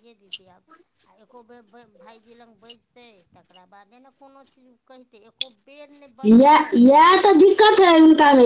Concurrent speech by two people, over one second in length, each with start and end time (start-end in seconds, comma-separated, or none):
none